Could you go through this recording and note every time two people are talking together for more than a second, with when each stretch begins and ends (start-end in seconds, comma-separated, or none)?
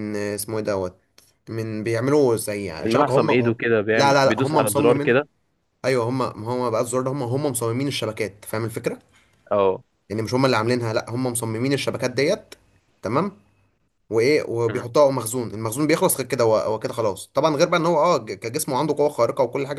3.9-5.2